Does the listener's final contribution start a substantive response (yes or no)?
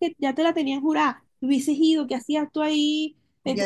yes